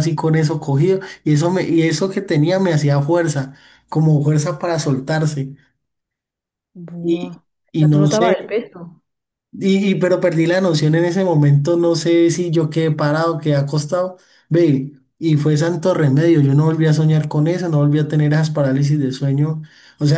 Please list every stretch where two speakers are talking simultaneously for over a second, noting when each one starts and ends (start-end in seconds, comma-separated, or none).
7.0-8.6